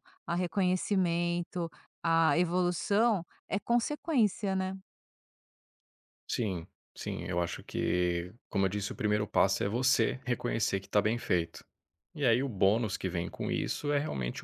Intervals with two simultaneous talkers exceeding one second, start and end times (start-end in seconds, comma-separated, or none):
none